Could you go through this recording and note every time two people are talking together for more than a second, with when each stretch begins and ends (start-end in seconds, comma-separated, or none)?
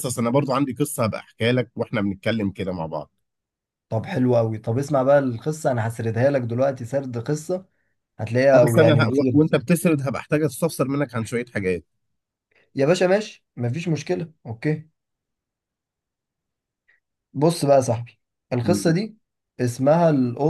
8.5-9.7